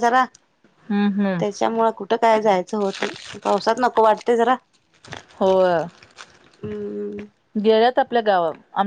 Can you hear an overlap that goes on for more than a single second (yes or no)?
no